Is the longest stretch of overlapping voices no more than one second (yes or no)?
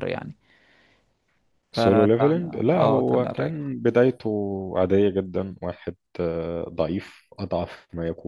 no